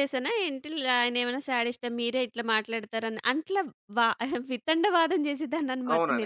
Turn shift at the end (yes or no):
yes